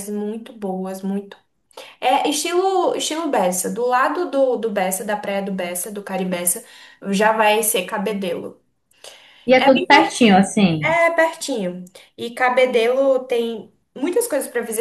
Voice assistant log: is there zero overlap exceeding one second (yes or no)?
no